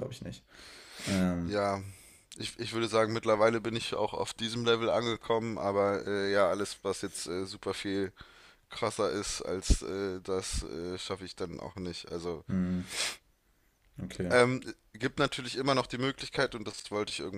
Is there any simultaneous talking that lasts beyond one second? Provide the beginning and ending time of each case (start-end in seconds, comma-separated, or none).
none